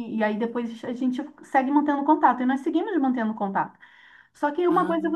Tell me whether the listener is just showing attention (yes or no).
yes